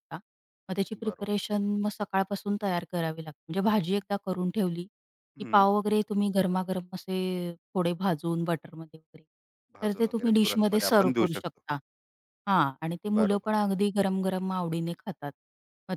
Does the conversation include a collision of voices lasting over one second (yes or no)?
yes